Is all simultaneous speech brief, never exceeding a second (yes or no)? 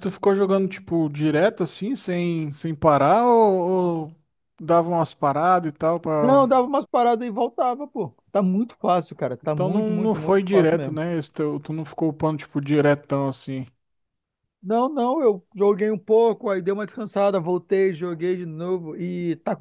no